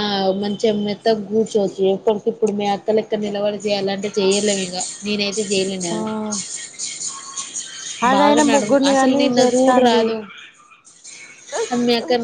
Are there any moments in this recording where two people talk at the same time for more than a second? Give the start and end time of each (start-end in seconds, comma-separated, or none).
8.1-10.0